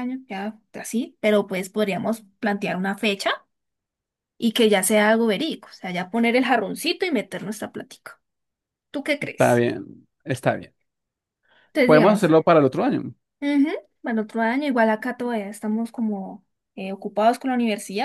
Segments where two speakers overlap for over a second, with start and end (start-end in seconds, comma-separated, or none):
none